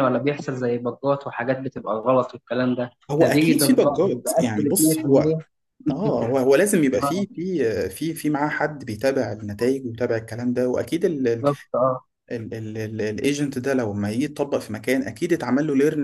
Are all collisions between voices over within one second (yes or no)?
no